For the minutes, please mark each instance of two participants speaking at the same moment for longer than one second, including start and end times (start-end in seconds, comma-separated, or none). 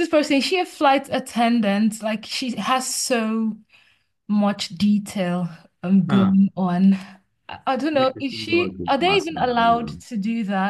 7.9-10.0